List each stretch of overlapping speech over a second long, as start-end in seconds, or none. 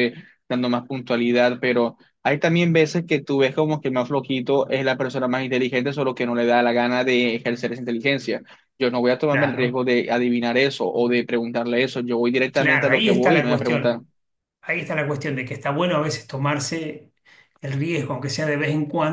12.5-14.0